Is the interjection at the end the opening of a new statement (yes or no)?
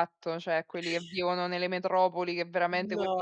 no